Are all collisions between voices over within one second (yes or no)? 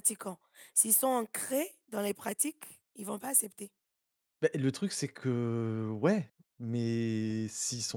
yes